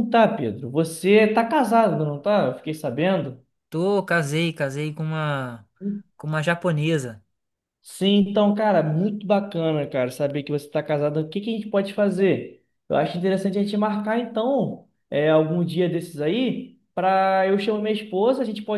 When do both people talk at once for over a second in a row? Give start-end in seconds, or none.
none